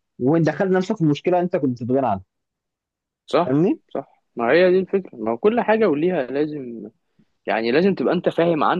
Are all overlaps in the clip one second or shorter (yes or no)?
yes